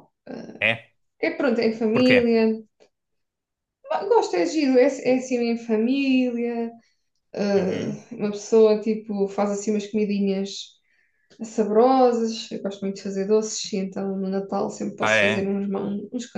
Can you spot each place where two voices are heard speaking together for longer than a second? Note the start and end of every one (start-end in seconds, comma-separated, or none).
none